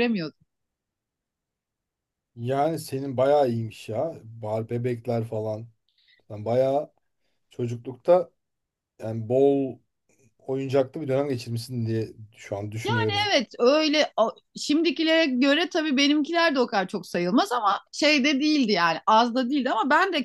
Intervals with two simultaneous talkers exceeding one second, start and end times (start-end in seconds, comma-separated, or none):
none